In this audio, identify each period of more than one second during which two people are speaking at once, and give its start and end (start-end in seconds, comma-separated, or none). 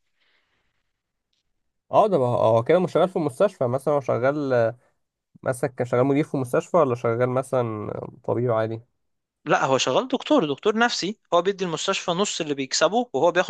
none